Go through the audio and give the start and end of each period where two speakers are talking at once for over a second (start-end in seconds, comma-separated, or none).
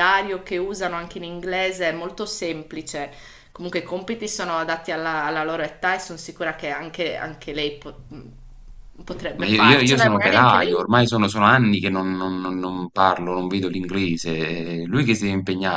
9.4-10.9